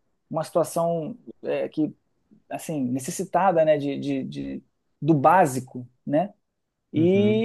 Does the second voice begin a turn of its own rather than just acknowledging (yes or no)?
no